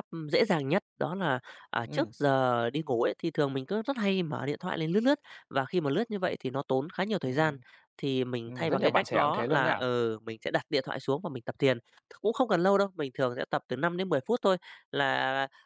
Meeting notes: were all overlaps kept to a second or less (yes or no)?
no